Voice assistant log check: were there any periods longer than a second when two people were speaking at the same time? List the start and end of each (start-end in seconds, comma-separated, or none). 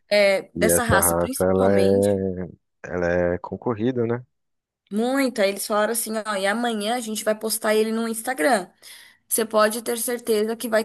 0.6-2.2